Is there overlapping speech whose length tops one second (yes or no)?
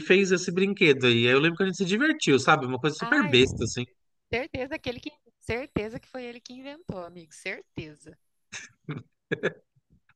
no